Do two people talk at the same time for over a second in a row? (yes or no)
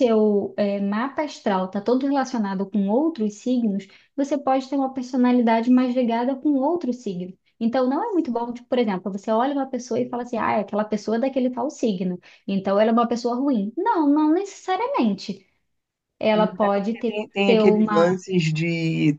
yes